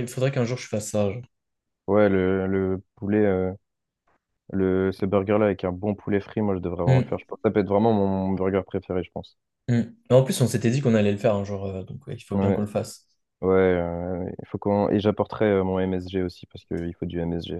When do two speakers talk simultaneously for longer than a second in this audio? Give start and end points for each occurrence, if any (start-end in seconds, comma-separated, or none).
none